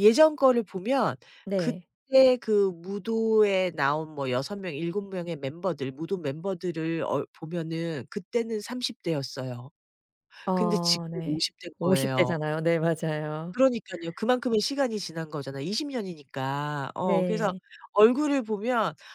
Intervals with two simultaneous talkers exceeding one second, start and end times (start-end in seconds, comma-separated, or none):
10.5-12.3